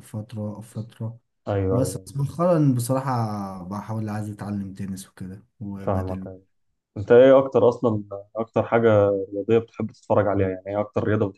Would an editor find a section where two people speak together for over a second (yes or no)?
no